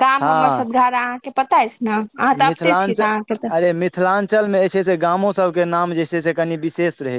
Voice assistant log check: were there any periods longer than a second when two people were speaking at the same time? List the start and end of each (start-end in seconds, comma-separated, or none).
none